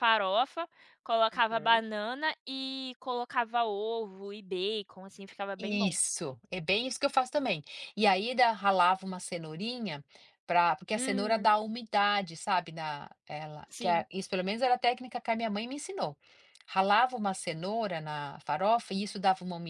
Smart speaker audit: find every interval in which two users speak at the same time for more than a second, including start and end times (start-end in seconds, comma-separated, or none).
none